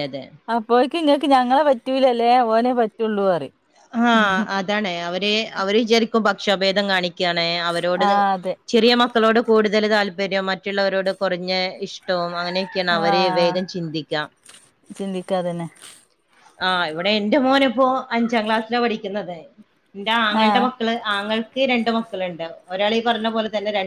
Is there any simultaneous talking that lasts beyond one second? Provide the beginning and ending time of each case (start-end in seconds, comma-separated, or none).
none